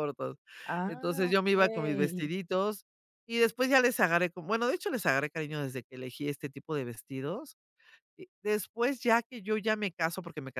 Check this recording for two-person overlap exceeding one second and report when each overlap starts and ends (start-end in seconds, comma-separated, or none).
0.8-2.3